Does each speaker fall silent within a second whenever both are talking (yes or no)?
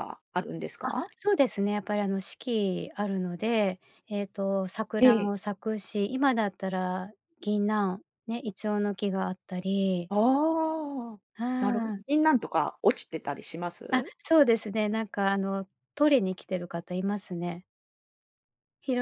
yes